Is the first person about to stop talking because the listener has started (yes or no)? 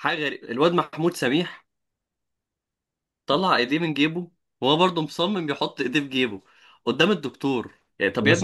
yes